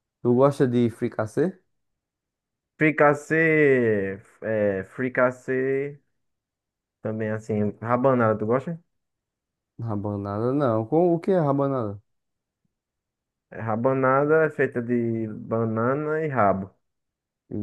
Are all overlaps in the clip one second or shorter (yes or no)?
yes